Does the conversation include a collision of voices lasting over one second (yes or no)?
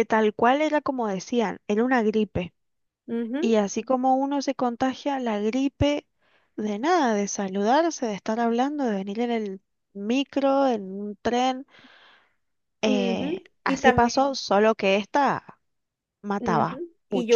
yes